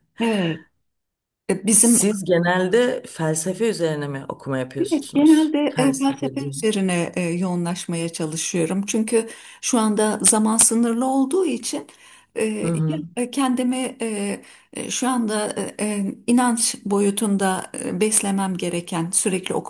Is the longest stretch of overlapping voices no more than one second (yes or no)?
no